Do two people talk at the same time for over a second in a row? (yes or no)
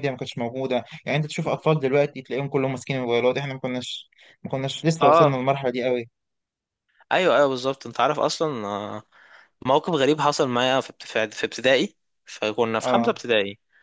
no